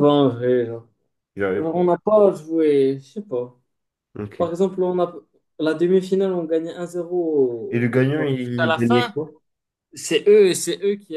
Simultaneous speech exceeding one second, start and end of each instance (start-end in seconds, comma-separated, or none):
7.7-9.2